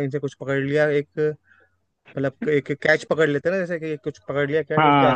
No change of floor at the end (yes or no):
yes